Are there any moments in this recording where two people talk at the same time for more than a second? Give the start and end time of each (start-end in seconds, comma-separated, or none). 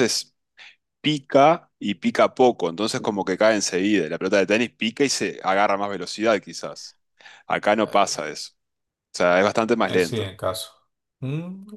none